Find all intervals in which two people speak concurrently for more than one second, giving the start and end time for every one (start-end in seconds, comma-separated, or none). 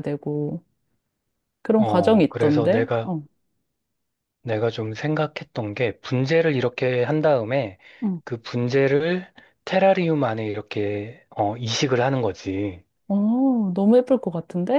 1.8-3.1